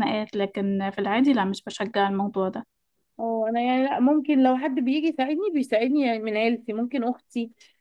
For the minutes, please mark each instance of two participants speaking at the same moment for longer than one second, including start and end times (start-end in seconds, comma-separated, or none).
none